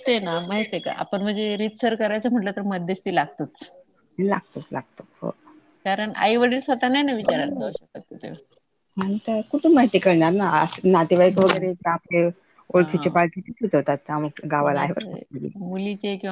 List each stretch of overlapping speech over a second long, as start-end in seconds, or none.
none